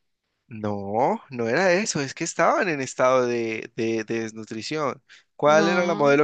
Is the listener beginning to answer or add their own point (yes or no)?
no